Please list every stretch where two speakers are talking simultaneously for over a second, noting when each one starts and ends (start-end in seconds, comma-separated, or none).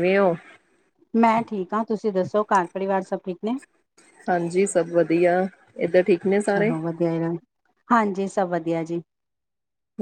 none